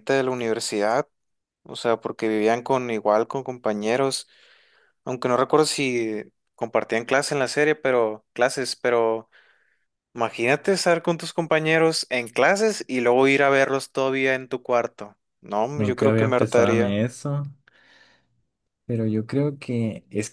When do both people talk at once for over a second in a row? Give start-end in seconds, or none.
15.8-17.0